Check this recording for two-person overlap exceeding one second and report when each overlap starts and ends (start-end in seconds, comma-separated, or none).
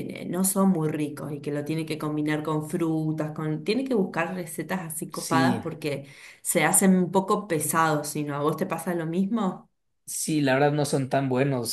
none